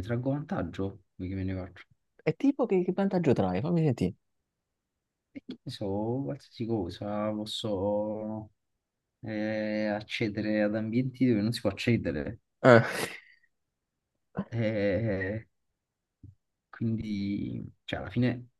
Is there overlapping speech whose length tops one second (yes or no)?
no